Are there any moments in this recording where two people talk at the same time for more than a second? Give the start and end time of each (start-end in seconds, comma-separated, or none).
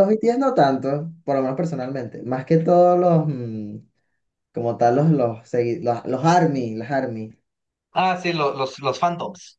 none